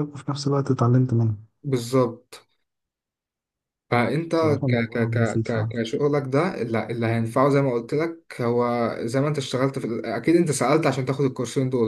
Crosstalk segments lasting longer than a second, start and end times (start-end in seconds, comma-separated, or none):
4.3-5.7